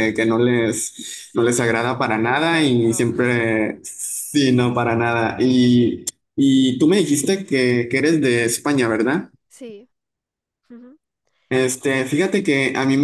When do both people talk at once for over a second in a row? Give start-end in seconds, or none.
1.1-3.1